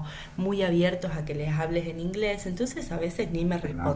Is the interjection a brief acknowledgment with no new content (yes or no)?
yes